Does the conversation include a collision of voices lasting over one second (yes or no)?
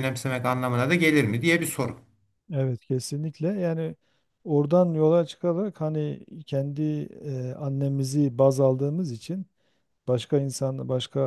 no